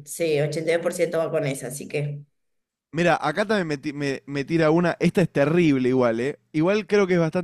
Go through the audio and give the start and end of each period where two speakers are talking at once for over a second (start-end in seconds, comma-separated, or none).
none